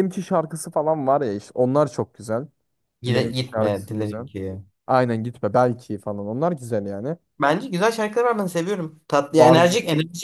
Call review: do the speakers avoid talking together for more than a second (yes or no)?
no